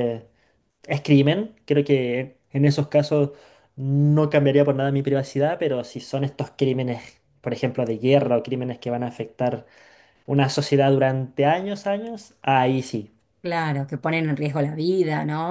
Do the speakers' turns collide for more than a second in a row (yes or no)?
no